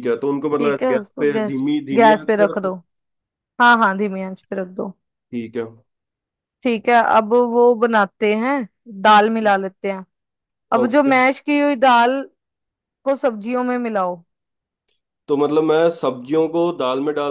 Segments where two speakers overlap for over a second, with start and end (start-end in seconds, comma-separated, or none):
0.6-2.7